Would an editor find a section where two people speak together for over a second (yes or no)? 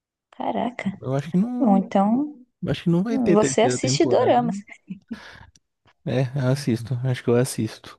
yes